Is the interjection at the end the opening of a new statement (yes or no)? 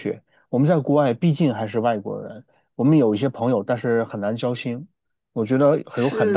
yes